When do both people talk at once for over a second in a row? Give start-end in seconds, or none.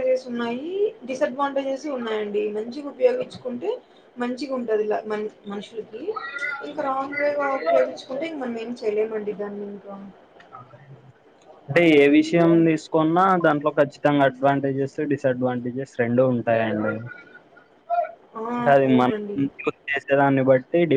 none